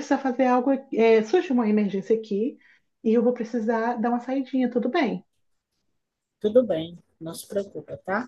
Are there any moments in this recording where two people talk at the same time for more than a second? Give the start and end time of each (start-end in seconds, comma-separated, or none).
none